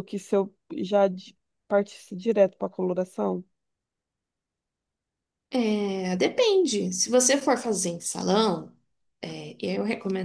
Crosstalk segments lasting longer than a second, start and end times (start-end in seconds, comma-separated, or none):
none